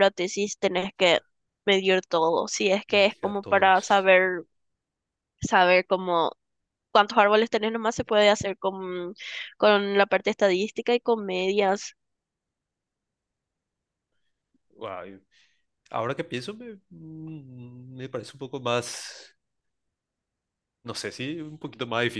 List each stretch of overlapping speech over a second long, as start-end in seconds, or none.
2.9-4.1